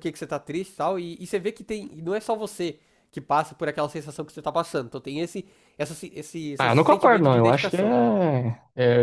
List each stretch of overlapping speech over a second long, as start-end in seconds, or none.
6.6-8.0